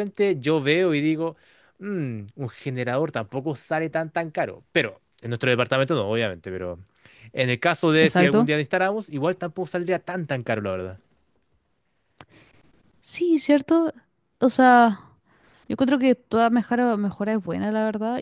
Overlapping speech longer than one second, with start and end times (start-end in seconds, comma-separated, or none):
none